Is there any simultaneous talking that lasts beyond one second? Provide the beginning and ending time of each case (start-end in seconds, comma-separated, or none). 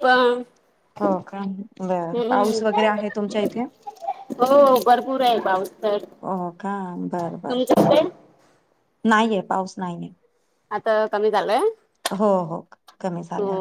none